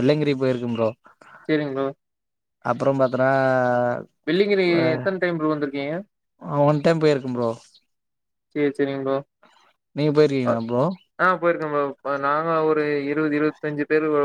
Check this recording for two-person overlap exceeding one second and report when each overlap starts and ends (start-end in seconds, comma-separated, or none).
none